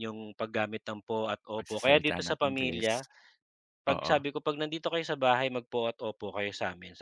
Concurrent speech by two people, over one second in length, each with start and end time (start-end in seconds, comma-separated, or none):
1.6-2.9